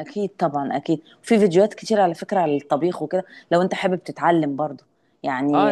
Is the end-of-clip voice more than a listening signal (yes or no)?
yes